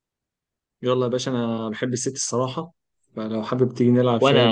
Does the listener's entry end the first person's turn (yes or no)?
yes